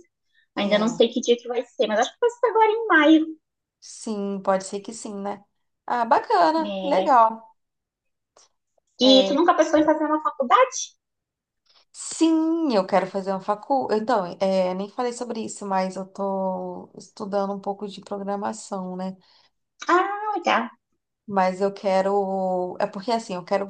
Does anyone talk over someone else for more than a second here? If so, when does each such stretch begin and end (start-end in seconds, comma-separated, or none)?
none